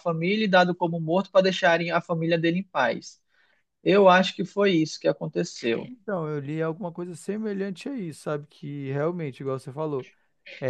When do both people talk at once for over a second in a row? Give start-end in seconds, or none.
none